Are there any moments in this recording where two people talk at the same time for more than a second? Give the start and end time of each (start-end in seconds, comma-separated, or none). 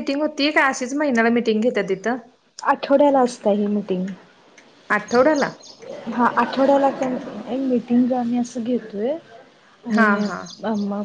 none